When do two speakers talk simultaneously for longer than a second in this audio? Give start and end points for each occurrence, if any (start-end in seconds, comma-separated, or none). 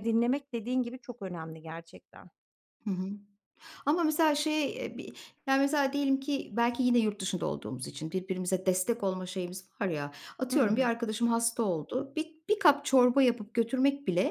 none